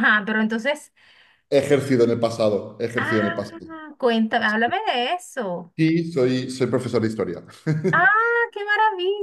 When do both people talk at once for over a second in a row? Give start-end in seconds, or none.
none